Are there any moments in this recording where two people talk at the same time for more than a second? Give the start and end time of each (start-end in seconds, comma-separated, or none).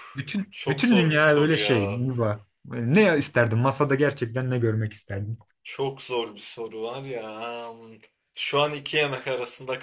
0.5-2.0